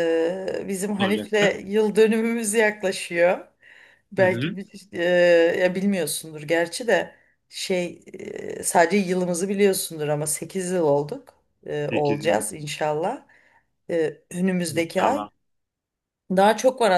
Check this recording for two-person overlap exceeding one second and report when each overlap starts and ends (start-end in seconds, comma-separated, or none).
none